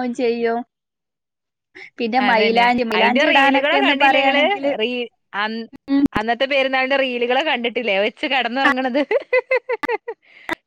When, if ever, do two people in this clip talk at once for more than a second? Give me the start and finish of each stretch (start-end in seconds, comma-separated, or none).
2.2-4.4